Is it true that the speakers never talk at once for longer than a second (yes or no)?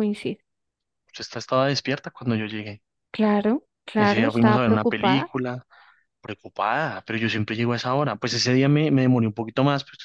no